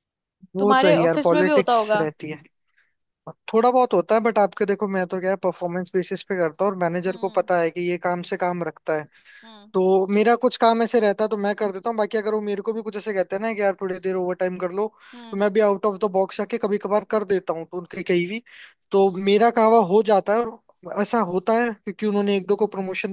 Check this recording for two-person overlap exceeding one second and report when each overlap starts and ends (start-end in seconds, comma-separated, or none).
0.6-2.1